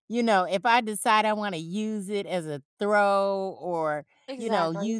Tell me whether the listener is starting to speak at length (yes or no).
no